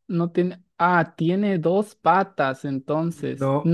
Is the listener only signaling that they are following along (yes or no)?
yes